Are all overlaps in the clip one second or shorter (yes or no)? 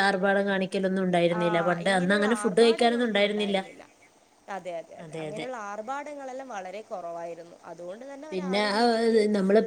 no